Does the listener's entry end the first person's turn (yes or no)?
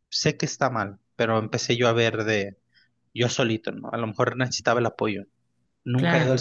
no